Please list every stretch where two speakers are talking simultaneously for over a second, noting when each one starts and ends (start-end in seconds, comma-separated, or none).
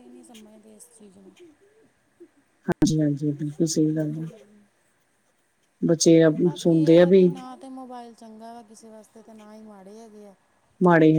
none